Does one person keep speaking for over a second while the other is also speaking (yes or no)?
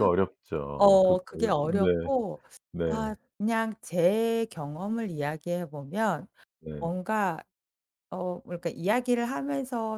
yes